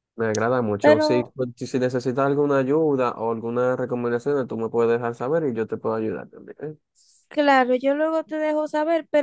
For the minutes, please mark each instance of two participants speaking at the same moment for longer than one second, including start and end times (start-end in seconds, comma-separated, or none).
none